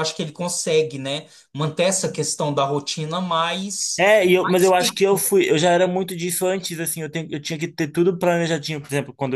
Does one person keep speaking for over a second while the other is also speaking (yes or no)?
yes